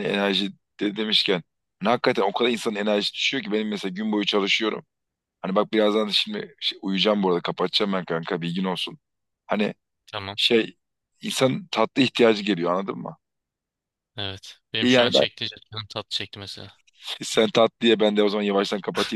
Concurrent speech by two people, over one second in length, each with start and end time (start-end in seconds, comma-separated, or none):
none